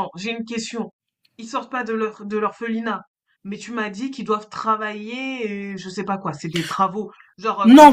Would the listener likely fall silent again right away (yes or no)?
no